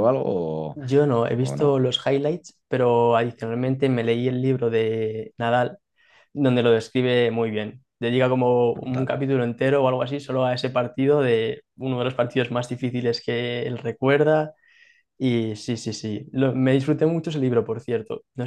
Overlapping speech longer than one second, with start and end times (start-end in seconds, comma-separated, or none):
none